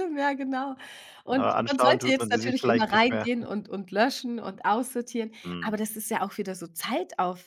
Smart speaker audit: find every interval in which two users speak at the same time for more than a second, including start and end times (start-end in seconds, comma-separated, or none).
1.3-3.3